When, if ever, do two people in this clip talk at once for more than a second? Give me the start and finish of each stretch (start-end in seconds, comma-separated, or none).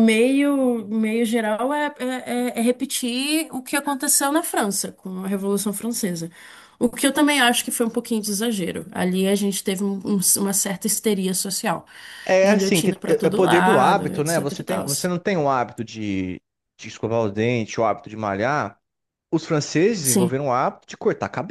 12.4-14.8